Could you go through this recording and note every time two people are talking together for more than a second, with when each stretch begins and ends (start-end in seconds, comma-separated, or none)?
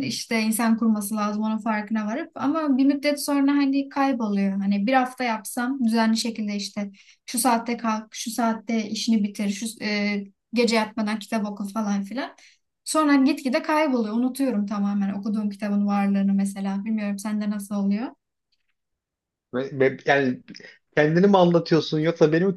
none